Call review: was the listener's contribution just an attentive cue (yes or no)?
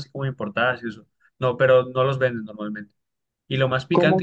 yes